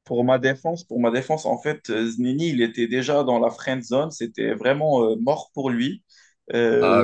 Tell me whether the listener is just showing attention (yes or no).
yes